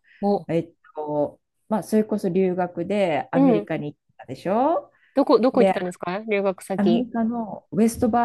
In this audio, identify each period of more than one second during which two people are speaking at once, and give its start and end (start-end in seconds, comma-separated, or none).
none